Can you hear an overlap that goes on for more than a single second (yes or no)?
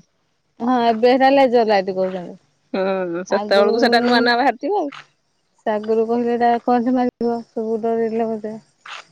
no